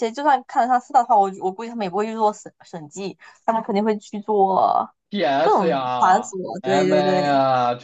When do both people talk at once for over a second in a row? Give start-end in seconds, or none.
5.4-7.2